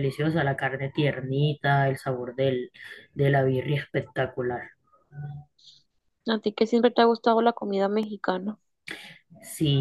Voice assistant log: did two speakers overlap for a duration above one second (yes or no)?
no